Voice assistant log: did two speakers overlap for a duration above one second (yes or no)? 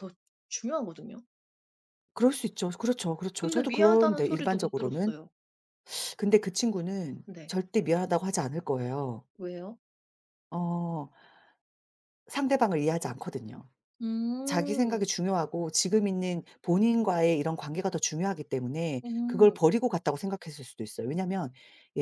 yes